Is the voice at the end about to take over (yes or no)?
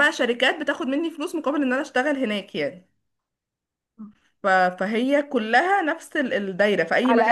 yes